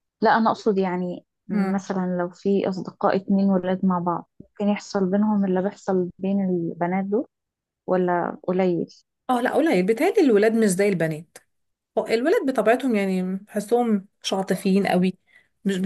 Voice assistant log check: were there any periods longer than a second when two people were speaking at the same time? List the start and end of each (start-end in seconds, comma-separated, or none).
none